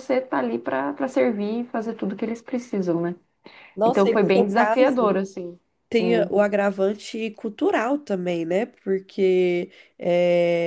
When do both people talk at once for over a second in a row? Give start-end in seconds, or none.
3.9-5.1